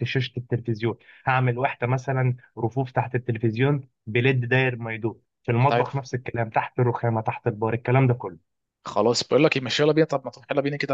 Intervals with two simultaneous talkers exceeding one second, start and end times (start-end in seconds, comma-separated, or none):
none